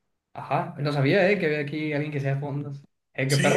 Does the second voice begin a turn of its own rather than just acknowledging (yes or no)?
yes